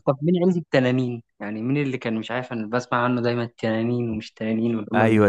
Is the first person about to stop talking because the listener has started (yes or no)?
yes